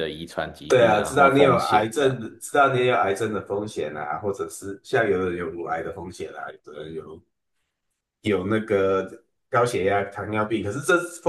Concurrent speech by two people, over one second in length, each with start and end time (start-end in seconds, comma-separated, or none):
0.7-2.1